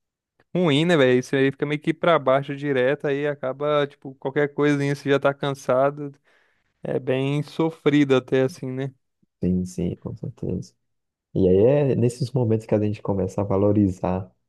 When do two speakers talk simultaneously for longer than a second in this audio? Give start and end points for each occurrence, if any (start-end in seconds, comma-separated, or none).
none